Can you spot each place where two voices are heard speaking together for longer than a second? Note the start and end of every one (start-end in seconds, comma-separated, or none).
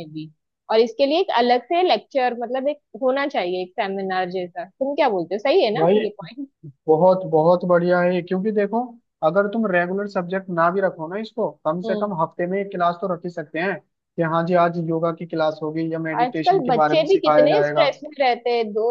16.2-17.8